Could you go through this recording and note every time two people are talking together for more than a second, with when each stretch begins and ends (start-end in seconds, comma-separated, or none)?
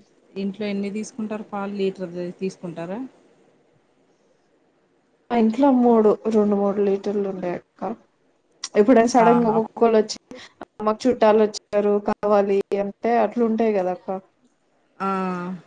none